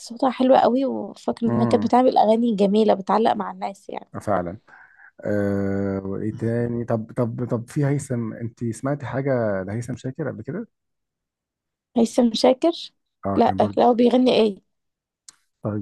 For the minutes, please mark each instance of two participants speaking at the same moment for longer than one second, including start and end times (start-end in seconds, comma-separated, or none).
none